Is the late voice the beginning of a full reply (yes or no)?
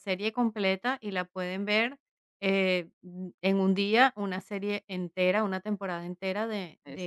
no